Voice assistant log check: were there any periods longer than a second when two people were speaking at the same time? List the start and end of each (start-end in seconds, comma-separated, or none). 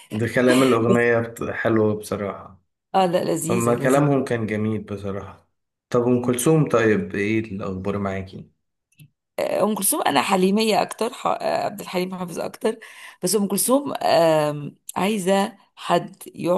none